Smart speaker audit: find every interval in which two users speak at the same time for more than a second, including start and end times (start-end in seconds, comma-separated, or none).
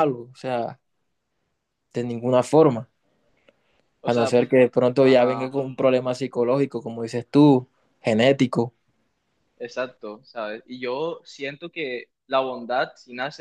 none